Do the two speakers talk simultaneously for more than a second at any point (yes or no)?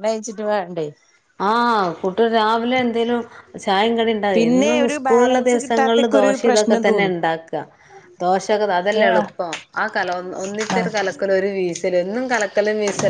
yes